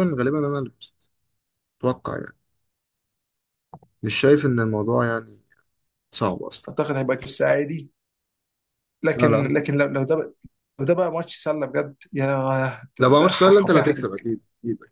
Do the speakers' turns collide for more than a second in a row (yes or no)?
yes